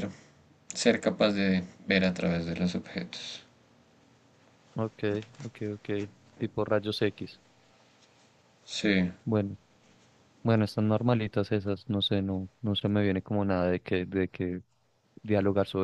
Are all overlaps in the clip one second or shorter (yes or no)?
yes